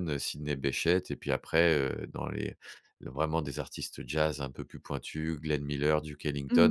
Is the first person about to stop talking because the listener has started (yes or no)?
no